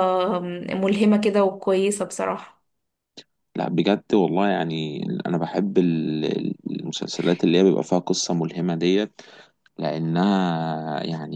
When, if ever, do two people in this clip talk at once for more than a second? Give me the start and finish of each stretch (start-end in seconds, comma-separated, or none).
none